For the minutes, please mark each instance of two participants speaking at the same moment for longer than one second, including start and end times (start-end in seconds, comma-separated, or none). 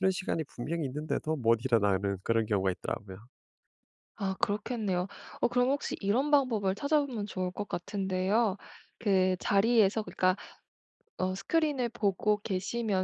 none